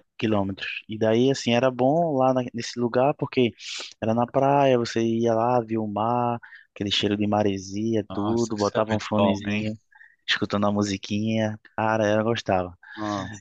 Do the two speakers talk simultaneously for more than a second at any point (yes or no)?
yes